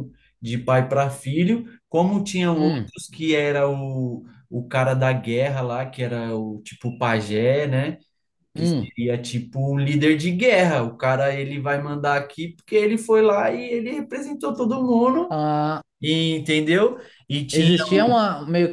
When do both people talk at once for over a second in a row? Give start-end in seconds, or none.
none